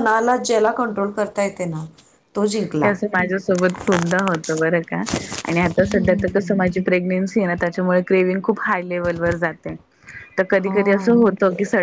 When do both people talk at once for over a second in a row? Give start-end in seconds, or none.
none